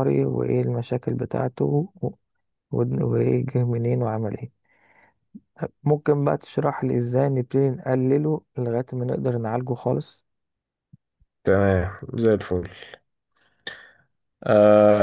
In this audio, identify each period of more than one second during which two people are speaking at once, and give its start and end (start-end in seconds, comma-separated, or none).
none